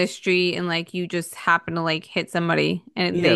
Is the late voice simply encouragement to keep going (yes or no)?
no